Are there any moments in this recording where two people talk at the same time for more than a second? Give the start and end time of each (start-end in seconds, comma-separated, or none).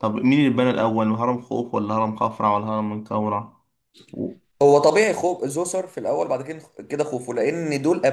none